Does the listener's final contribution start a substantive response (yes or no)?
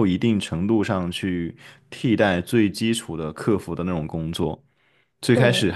no